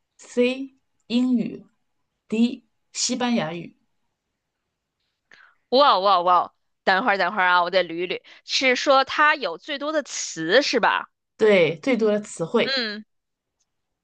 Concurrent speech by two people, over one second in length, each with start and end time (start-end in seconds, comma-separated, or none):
none